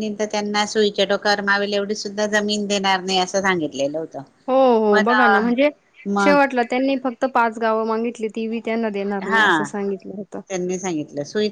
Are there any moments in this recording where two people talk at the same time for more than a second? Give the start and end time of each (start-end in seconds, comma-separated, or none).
none